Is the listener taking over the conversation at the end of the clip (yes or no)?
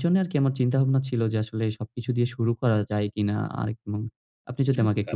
no